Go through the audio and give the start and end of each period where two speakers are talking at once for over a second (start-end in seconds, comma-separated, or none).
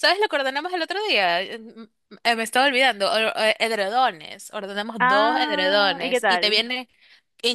5.0-6.7